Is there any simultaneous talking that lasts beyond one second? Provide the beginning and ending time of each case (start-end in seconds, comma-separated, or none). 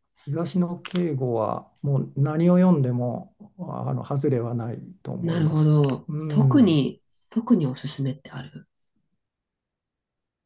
5.2-6.8